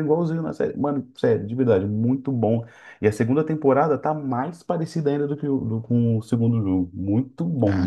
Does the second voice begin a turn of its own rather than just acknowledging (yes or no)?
yes